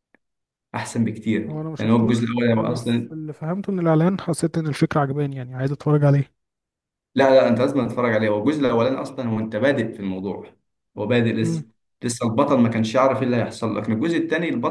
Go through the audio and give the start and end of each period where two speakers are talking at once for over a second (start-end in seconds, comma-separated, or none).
1.5-3.2